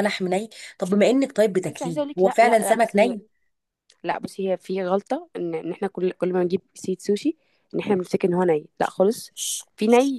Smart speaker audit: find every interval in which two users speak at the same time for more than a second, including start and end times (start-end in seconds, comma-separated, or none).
1.7-3.2